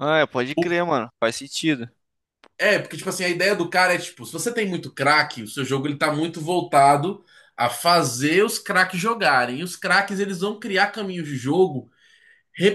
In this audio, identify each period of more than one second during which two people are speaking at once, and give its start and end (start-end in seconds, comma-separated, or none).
none